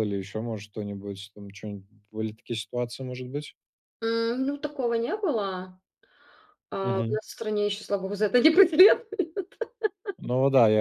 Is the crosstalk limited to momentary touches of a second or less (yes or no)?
yes